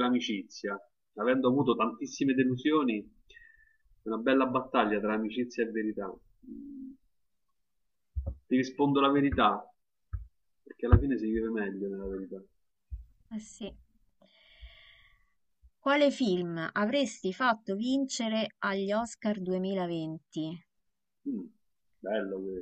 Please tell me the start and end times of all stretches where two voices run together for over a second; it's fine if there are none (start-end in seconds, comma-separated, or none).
none